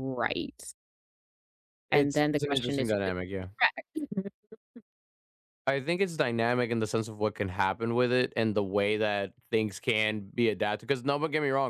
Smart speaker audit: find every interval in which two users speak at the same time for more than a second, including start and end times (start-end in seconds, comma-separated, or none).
1.9-3.1